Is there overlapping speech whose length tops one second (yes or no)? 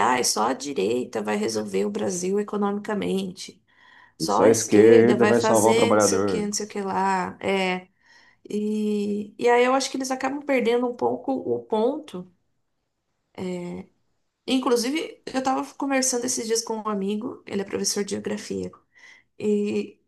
yes